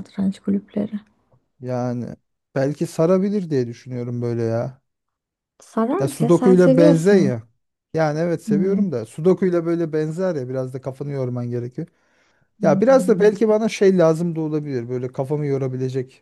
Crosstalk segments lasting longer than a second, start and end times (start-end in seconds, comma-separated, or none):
6.0-7.4